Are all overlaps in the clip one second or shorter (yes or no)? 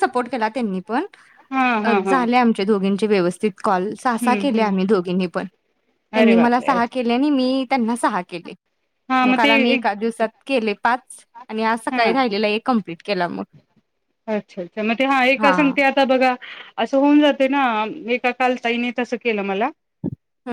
yes